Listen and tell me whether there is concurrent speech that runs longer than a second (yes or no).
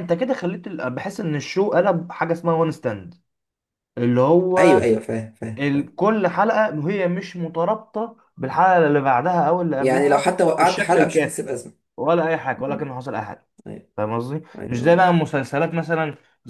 yes